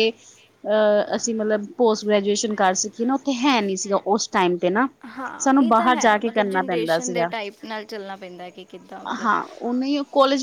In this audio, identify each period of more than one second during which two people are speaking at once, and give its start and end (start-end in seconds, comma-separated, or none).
5.4-7.3